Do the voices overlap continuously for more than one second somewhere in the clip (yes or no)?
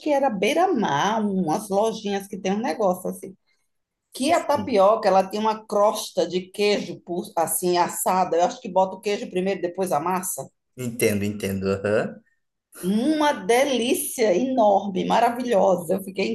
no